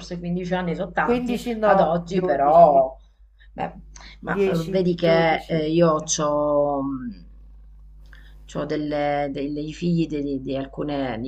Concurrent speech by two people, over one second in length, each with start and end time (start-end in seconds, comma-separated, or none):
1.0-2.8, 4.2-5.7